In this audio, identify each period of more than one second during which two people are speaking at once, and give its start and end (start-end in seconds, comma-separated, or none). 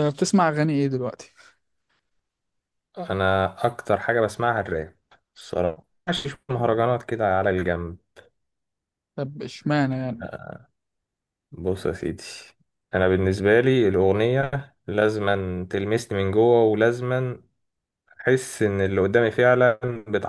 none